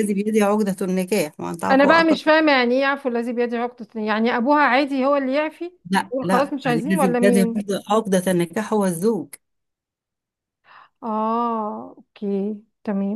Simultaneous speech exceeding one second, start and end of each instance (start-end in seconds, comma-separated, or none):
6.1-7.7